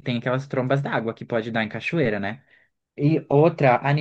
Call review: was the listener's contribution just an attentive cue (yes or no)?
yes